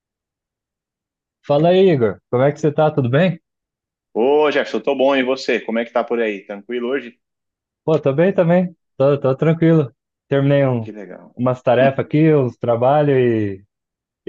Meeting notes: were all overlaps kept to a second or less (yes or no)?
yes